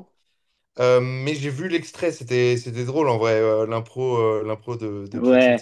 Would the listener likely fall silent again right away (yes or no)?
no